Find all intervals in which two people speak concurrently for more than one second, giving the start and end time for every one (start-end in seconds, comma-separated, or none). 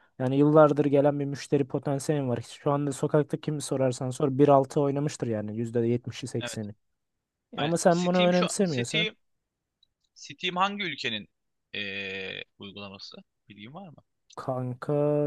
7.6-9.1